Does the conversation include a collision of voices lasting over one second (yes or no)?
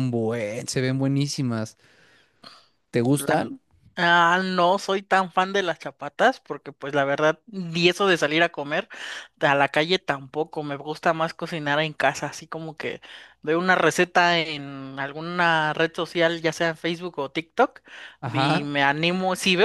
no